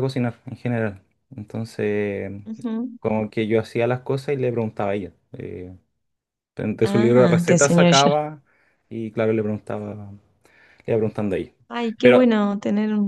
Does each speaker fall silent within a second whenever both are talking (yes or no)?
no